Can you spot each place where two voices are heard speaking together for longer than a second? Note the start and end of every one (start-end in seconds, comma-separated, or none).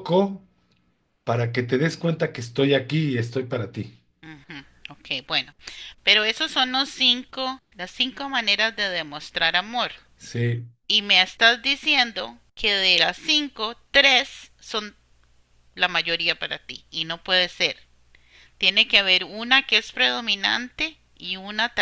none